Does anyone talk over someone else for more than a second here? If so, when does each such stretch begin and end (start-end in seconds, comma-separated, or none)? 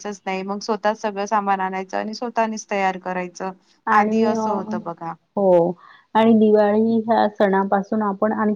none